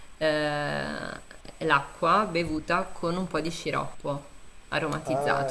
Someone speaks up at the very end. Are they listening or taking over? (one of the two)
taking over